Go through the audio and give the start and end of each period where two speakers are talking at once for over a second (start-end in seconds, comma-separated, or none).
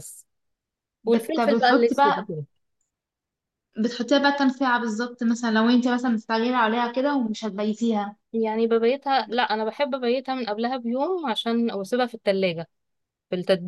1.1-2.3